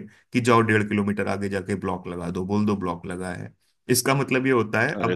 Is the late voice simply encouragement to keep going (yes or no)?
yes